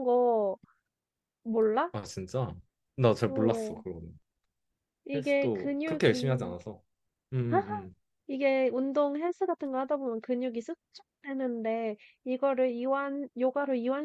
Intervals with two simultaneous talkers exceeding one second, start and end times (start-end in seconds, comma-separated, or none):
5.1-6.5